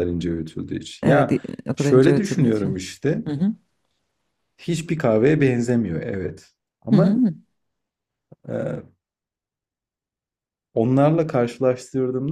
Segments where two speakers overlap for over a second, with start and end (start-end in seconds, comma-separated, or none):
1.0-2.8